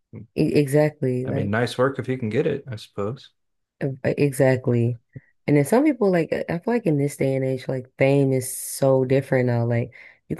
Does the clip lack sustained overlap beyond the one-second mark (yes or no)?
yes